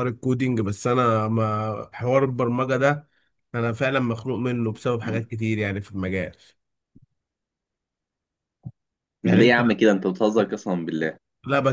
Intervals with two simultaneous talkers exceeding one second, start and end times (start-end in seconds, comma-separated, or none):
none